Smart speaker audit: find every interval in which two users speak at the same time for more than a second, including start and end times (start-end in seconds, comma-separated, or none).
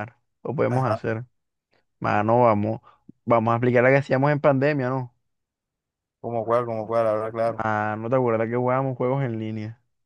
none